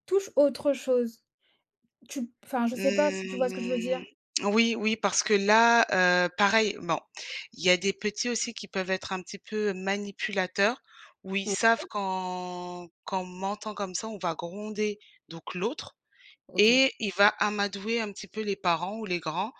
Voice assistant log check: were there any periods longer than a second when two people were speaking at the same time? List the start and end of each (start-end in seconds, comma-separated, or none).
2.7-4.0